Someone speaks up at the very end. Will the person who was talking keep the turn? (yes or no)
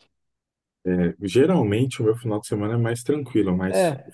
yes